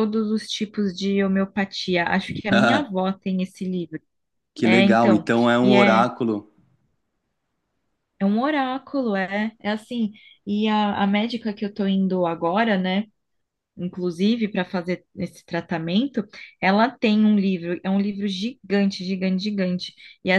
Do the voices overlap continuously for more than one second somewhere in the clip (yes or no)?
yes